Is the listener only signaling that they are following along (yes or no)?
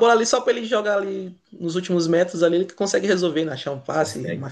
yes